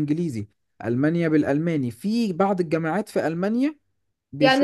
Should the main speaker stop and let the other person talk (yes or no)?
yes